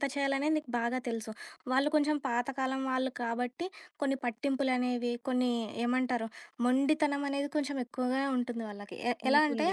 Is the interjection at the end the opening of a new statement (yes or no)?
no